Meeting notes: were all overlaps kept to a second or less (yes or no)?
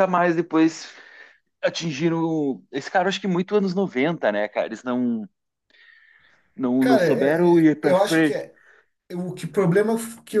no